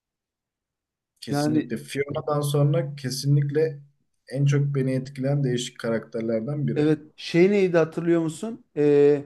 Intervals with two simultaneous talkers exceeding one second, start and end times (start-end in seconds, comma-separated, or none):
none